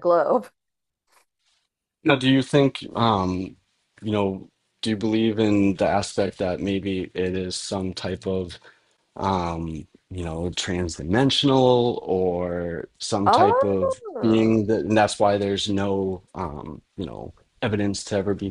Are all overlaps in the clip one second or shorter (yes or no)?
no